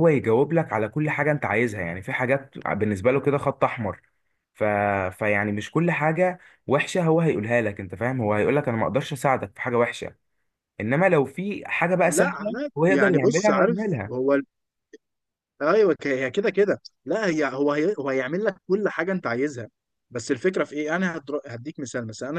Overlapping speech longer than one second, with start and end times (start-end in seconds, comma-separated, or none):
12.0-14.1